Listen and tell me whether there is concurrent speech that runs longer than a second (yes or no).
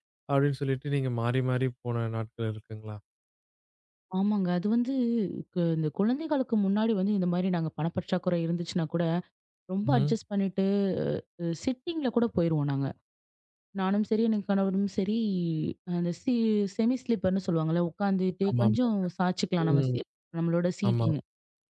no